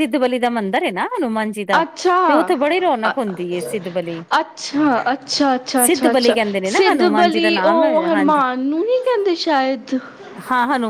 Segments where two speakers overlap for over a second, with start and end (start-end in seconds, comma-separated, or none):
5.8-8.4